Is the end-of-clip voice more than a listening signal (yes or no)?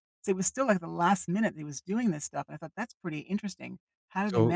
yes